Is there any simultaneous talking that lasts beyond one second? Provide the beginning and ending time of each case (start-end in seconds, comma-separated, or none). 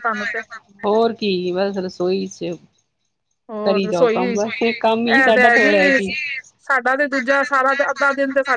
none